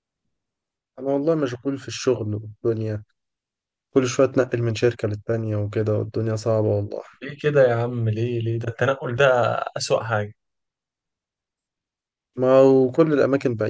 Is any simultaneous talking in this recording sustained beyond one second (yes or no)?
no